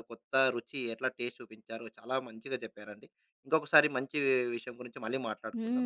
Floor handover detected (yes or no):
yes